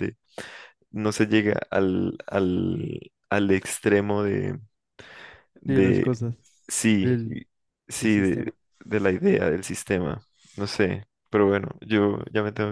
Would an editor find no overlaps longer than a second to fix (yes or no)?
yes